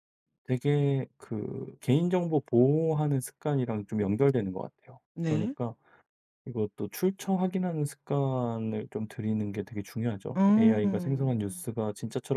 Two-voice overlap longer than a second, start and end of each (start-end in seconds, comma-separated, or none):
10.4-11.6